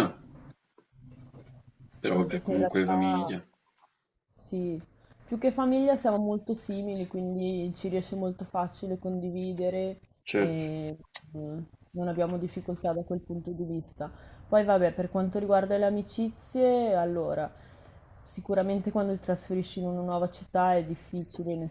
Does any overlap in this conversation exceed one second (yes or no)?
yes